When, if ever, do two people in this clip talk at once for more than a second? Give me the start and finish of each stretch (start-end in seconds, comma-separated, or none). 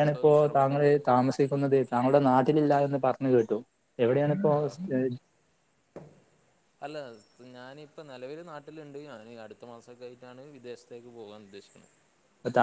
none